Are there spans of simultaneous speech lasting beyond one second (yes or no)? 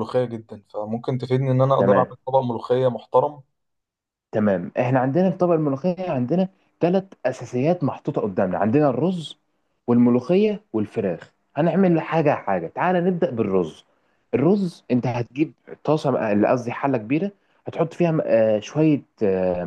no